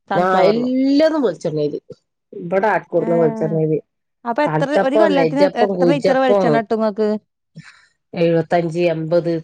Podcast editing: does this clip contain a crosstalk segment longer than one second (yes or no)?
yes